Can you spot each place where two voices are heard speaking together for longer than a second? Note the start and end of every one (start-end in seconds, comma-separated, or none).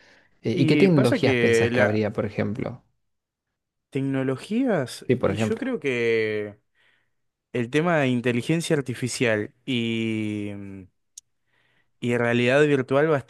0.5-2.0